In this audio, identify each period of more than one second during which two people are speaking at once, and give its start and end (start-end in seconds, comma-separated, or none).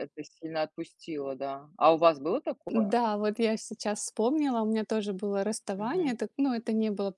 none